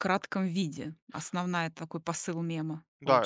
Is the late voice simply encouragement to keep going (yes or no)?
no